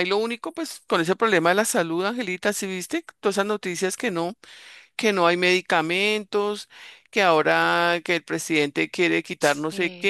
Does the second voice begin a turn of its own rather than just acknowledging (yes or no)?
no